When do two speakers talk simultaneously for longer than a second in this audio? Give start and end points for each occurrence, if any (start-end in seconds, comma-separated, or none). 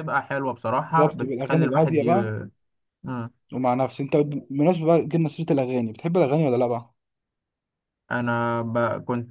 0.9-2.1